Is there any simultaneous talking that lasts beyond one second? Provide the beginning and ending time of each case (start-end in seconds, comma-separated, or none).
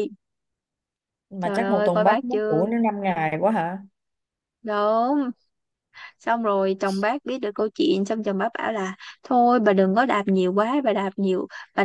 1.4-2.7